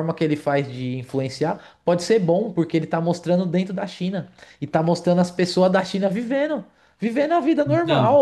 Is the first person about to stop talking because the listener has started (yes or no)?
no